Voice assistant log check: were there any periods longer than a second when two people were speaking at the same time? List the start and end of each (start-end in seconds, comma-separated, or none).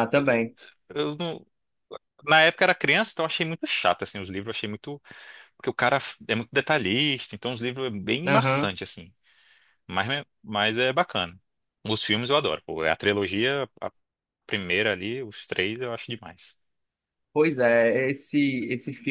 none